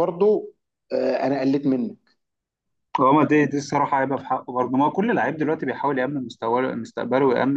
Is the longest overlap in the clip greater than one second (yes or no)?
no